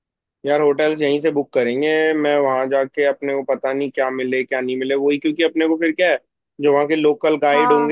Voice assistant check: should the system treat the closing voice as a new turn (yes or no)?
no